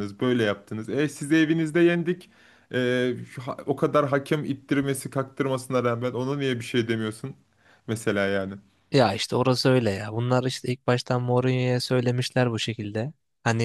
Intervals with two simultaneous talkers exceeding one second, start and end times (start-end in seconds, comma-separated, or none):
none